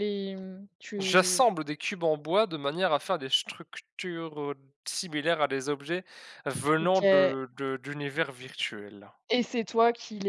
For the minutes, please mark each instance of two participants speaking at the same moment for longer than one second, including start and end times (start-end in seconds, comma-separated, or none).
none